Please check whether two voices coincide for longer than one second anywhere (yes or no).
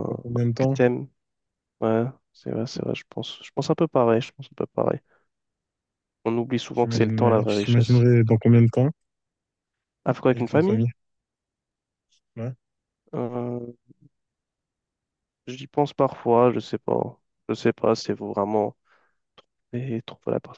yes